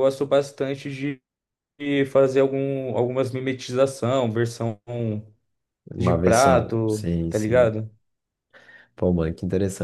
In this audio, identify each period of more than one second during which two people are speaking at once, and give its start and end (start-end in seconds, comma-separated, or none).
6.0-7.8